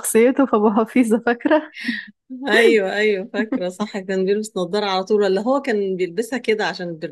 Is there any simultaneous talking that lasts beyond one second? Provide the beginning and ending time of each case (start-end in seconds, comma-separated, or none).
none